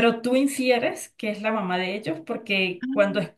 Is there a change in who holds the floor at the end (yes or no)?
no